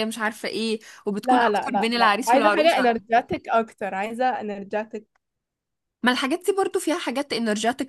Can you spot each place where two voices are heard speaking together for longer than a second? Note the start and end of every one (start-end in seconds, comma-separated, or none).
1.2-2.9